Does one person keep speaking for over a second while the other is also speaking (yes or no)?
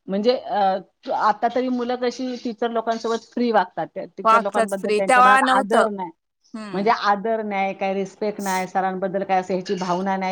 yes